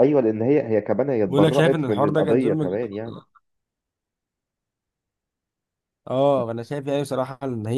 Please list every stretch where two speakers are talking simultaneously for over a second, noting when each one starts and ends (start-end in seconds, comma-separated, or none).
1.3-2.9